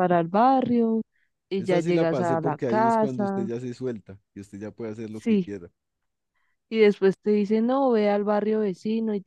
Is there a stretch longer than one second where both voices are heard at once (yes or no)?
yes